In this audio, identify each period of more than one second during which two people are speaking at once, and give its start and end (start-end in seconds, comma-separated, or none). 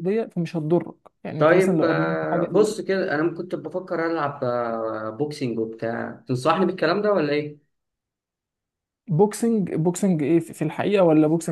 1.4-2.7